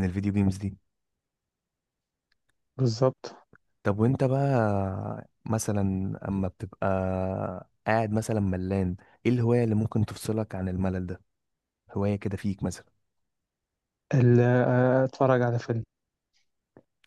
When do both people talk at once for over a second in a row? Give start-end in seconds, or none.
none